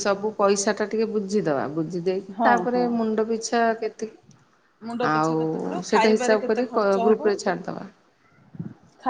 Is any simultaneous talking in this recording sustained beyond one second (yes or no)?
yes